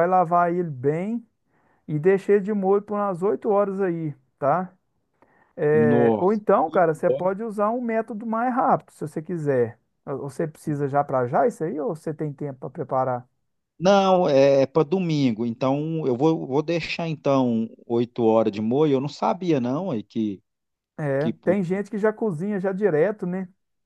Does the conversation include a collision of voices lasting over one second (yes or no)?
yes